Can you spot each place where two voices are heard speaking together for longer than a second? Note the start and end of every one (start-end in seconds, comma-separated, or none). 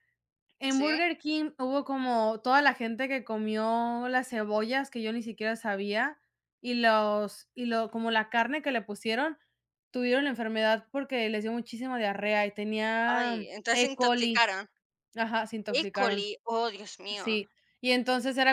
13.1-14.5